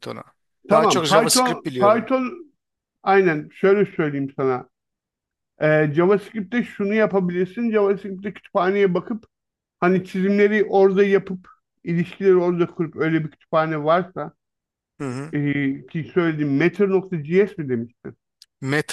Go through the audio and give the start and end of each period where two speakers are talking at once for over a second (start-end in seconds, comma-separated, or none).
0.7-2.1